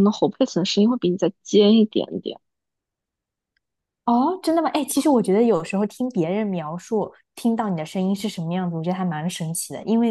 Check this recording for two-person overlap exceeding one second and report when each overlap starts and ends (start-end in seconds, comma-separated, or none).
none